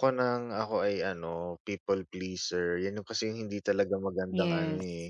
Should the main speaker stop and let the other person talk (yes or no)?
no